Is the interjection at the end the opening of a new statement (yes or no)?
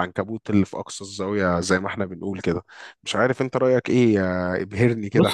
yes